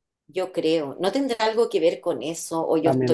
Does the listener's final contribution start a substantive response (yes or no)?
yes